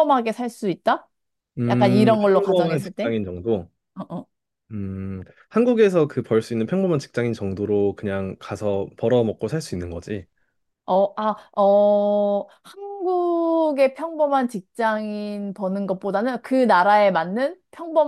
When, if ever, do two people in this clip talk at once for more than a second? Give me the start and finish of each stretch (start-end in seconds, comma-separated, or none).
1.7-3.1